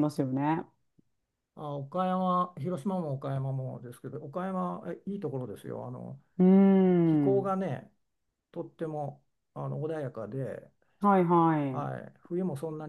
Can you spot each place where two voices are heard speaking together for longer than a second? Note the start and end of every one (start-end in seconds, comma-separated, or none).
none